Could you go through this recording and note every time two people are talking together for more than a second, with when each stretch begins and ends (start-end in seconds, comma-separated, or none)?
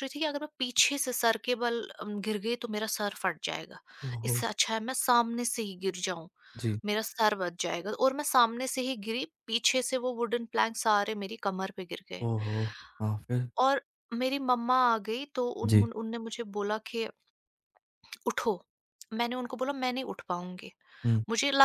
none